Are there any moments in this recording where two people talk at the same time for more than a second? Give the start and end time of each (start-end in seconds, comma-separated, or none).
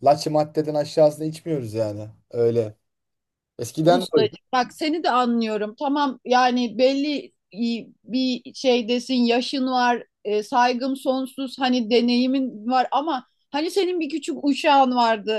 none